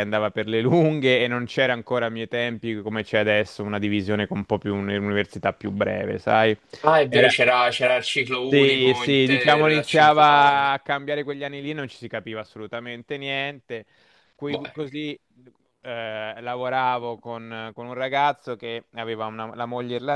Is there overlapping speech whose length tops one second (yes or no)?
yes